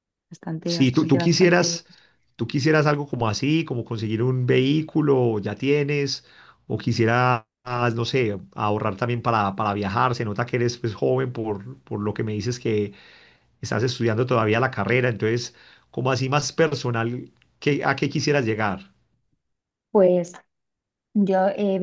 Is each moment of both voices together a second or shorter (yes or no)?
no